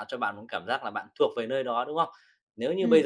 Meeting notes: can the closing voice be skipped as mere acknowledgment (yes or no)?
yes